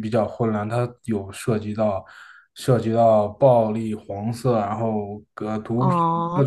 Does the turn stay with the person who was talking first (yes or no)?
no